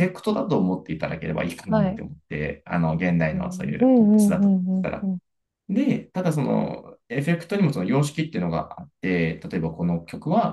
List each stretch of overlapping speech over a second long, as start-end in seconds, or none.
3.3-5.1